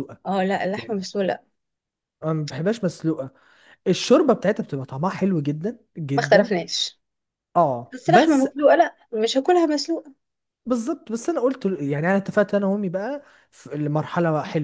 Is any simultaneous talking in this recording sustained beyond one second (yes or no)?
no